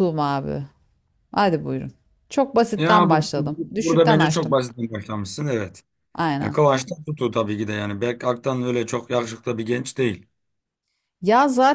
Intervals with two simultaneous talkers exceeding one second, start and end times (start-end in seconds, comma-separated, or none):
2.8-4.6